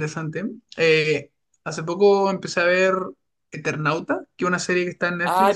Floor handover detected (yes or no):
yes